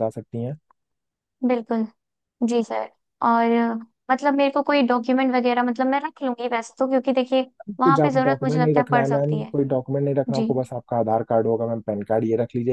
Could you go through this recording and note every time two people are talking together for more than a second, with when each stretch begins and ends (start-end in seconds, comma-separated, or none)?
7.8-9.5